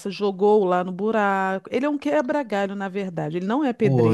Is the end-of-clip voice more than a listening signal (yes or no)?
yes